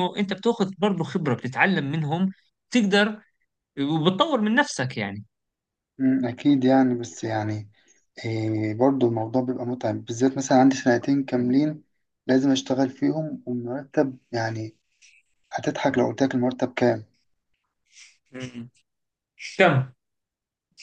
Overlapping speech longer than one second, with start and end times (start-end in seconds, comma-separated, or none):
none